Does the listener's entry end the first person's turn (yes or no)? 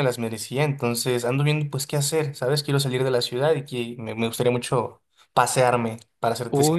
yes